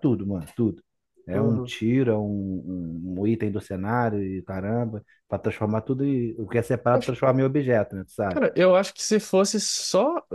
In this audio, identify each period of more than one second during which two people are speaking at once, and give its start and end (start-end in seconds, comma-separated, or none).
none